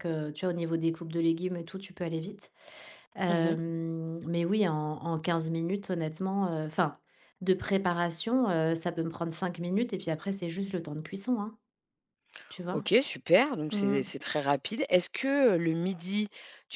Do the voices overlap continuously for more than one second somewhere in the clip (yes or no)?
no